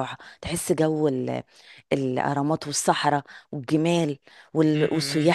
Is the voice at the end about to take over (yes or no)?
no